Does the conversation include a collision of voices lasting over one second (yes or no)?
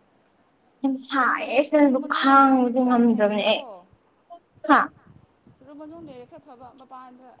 yes